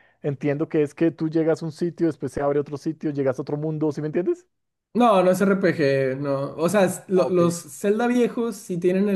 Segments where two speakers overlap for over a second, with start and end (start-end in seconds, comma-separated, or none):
none